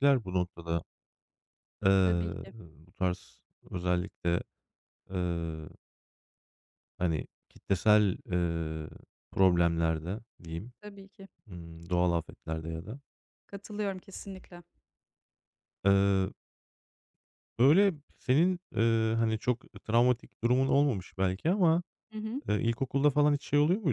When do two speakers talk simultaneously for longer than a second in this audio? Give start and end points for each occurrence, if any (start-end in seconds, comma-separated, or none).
none